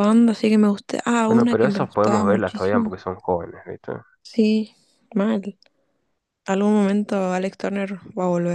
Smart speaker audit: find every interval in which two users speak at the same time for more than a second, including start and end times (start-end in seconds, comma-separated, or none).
1.3-2.9